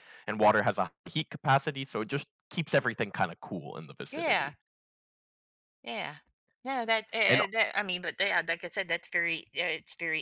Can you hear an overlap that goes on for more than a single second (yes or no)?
no